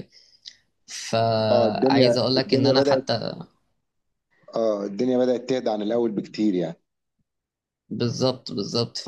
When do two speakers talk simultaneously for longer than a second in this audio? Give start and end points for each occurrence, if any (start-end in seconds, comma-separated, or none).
1.5-3.0